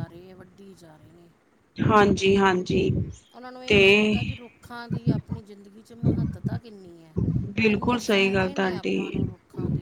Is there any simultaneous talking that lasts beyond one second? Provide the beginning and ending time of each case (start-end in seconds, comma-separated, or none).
7.7-9.1